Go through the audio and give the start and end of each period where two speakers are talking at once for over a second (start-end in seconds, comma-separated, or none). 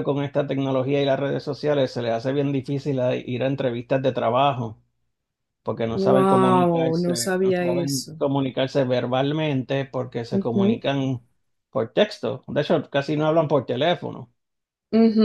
5.9-8.2